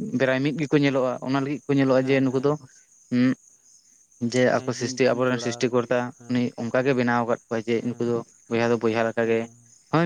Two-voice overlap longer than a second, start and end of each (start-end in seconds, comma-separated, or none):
4.5-6.4